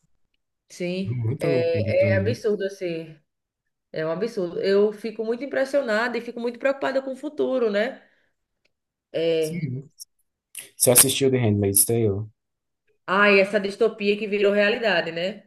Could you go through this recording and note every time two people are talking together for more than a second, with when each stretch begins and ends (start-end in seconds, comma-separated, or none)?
1.1-2.4